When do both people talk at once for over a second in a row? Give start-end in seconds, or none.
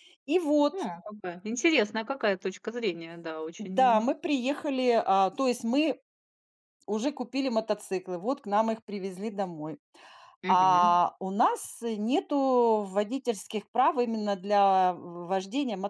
none